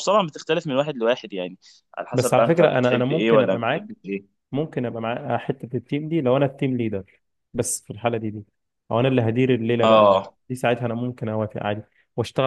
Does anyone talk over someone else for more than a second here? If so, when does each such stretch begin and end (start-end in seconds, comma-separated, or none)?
2.1-4.0